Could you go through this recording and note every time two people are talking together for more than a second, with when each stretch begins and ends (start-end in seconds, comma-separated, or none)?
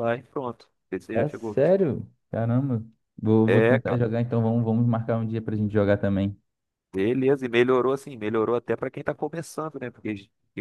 none